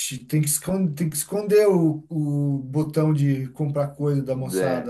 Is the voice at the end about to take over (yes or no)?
yes